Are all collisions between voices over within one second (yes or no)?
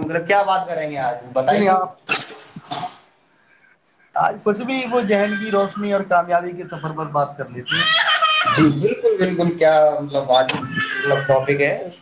yes